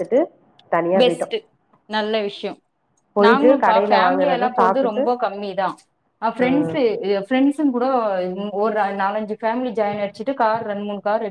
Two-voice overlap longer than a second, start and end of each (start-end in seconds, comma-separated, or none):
3.2-5.0